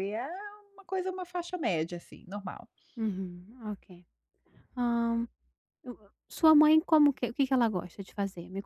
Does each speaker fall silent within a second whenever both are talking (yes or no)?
yes